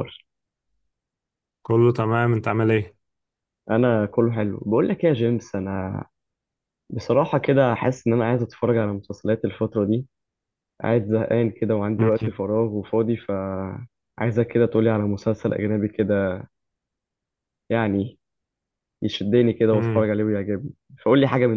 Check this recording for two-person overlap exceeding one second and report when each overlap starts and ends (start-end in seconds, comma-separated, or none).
none